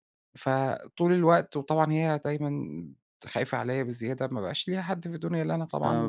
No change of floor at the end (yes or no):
no